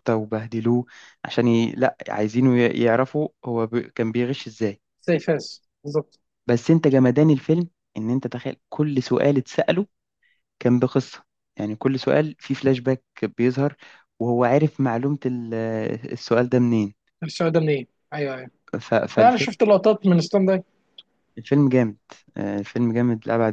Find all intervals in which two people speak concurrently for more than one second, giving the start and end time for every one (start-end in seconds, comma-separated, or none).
none